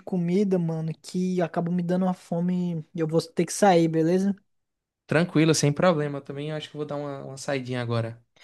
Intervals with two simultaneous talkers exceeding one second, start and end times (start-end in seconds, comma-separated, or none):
none